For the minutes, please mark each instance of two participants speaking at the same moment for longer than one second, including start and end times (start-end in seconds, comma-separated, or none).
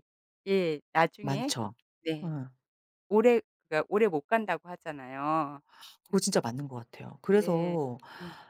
none